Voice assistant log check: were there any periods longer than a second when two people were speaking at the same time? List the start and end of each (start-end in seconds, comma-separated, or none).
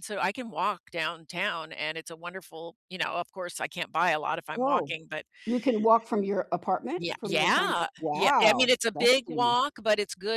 7.0-9.6